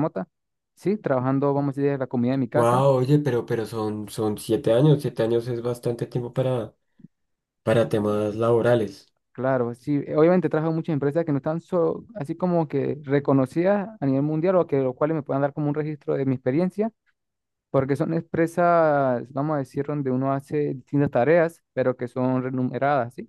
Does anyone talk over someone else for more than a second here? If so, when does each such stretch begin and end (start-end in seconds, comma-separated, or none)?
none